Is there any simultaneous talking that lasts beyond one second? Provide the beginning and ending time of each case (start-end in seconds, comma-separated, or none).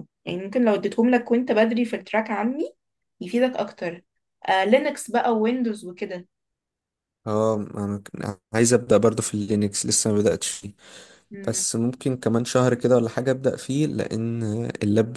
none